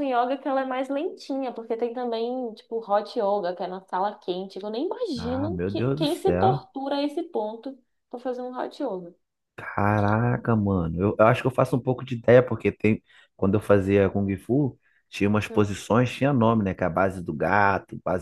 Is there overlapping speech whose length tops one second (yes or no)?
yes